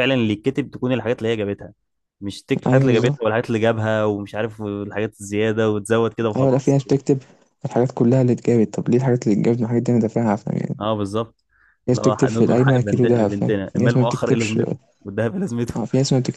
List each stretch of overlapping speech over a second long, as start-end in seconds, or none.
11.9-14.6